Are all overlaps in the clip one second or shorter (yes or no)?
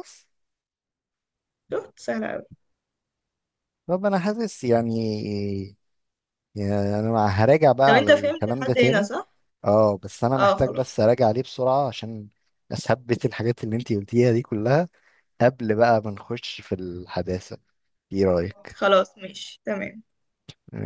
no